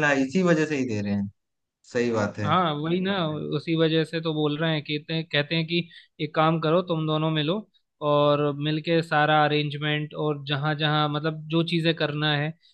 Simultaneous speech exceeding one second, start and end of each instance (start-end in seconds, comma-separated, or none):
none